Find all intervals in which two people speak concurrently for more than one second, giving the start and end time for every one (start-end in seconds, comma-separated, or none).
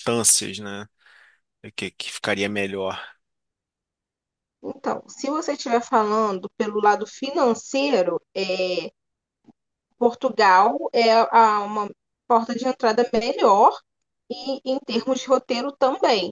none